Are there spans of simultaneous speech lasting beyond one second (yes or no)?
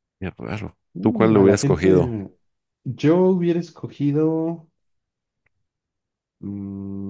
yes